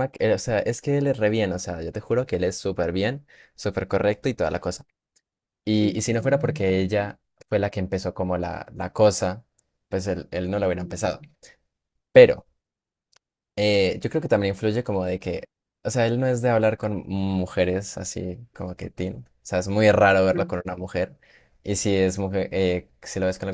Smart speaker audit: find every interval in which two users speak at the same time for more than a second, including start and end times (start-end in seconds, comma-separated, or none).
5.8-7.1